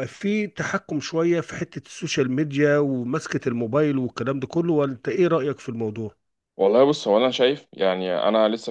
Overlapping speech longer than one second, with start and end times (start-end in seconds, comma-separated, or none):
none